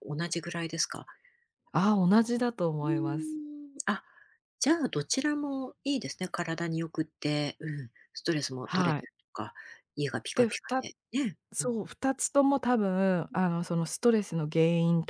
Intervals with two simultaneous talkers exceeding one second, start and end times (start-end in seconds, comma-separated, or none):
none